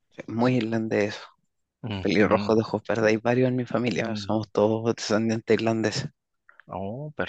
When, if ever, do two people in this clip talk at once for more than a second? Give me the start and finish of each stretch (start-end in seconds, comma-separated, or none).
none